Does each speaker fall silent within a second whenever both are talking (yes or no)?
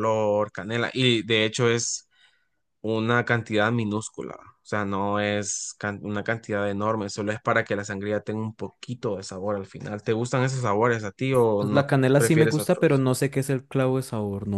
no